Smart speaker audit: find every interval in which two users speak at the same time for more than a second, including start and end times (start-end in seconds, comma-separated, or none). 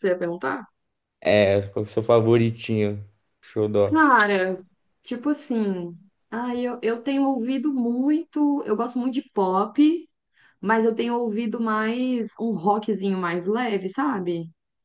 none